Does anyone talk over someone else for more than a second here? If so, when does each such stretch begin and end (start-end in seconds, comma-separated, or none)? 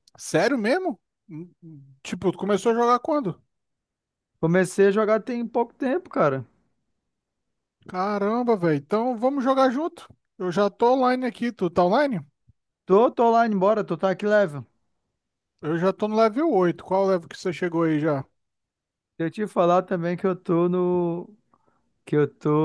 none